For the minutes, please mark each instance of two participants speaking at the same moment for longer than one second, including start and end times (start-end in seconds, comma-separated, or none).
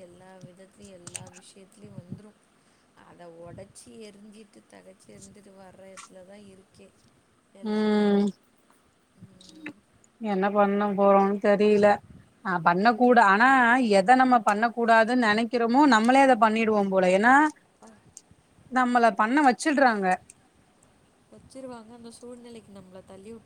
none